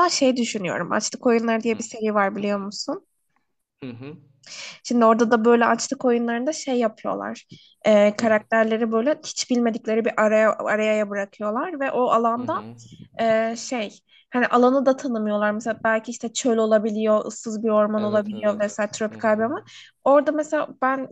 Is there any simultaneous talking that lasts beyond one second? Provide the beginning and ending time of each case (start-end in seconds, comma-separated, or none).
18.0-19.5